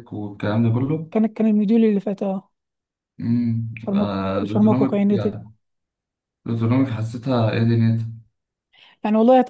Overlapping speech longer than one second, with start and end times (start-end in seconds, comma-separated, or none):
3.8-5.4